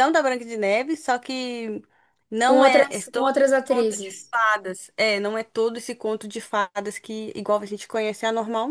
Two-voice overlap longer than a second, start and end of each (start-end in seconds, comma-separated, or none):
2.5-4.3